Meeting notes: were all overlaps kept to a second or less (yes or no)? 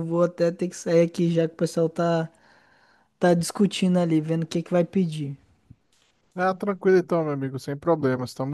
yes